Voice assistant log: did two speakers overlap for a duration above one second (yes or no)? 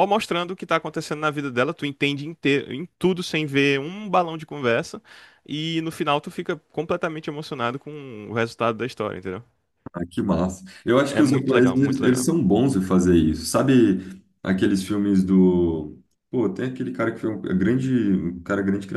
yes